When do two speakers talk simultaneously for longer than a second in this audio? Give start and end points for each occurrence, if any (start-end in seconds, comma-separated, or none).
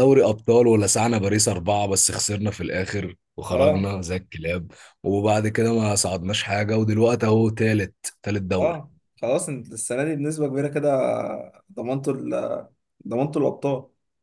none